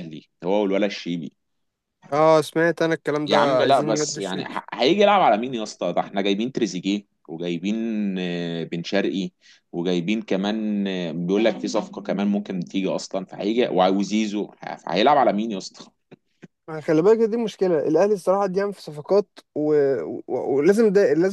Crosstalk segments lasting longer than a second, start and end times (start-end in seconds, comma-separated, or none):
3.3-4.5